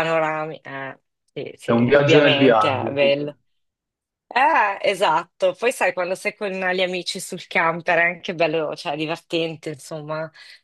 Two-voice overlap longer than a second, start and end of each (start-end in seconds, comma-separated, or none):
1.6-3.2